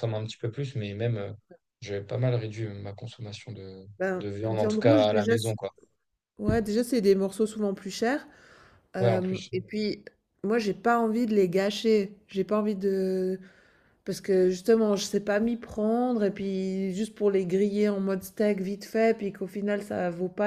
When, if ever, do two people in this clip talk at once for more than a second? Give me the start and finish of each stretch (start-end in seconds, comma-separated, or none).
4.0-5.5